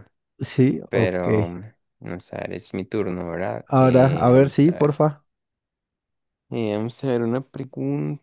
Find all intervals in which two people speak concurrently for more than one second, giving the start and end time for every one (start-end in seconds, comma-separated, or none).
3.7-5.0